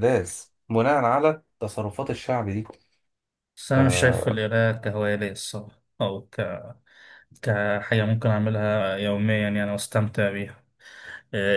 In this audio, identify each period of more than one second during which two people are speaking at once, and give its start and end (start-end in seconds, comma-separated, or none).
none